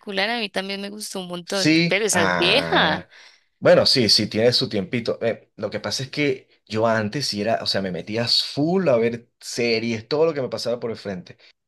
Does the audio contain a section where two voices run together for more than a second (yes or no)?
yes